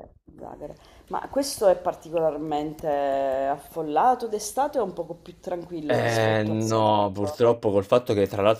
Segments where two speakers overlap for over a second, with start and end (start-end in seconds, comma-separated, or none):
5.8-7.4